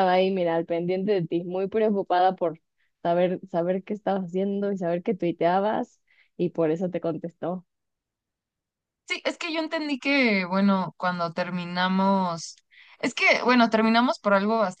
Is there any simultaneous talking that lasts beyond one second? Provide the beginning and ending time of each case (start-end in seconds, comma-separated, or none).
none